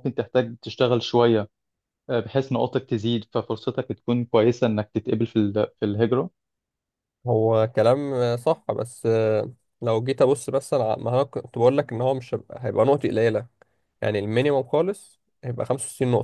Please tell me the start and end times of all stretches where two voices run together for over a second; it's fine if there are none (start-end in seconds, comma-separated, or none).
none